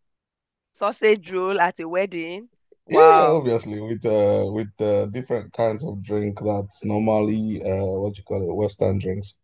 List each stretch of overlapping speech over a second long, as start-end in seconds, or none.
none